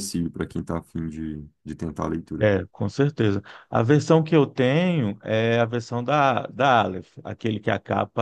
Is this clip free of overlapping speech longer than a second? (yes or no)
yes